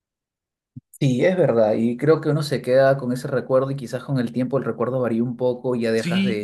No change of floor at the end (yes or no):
no